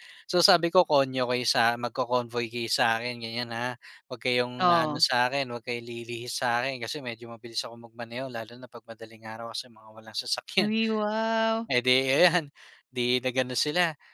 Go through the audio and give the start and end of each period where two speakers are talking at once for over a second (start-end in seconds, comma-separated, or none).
none